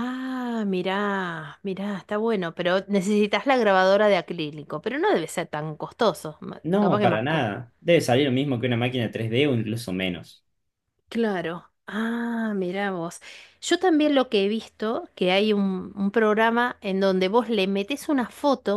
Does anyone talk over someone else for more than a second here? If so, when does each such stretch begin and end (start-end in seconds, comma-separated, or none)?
none